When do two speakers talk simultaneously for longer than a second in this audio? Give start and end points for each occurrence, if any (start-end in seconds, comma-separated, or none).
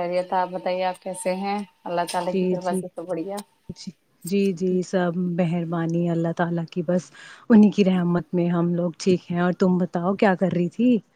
none